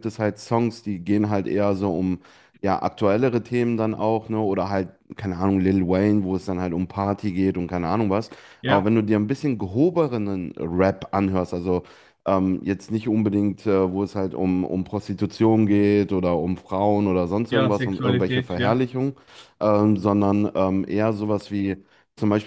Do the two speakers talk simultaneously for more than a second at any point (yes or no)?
yes